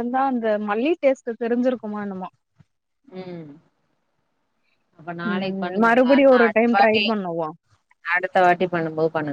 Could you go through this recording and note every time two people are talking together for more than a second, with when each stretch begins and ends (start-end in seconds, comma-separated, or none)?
5.3-7.2